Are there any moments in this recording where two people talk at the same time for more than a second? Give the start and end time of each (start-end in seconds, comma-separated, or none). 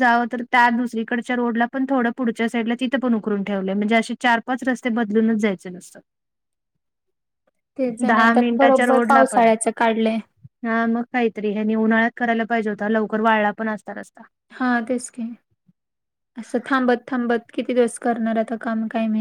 8.1-9.5